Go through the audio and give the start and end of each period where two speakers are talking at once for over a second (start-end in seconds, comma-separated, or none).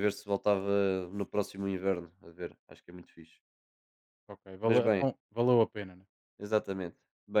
none